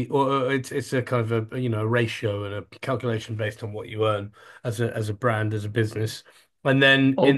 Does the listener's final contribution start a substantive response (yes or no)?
yes